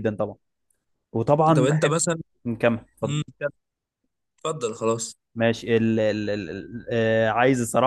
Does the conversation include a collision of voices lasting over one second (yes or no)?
no